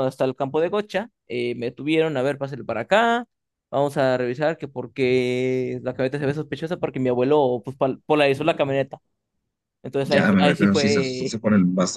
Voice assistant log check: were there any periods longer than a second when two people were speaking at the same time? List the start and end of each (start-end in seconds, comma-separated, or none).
10.0-11.4